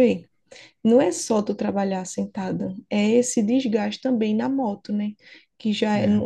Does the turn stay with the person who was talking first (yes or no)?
yes